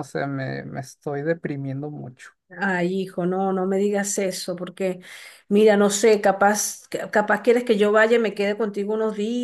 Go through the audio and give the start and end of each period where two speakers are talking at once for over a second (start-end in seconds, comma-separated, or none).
none